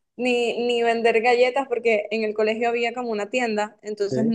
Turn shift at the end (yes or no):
no